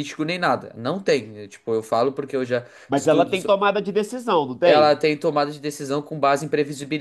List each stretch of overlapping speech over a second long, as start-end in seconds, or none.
none